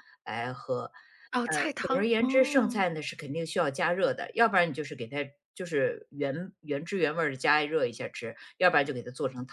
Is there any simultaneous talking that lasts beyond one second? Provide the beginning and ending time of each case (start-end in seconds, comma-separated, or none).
1.4-2.9